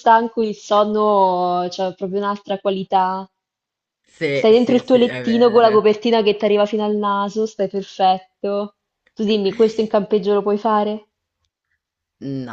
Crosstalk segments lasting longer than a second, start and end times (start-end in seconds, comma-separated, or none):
4.3-5.8